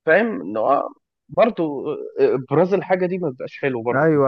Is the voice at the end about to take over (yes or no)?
yes